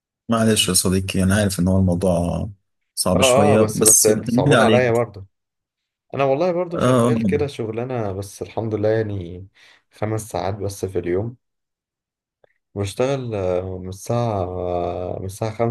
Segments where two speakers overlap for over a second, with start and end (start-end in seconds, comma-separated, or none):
3.1-5.0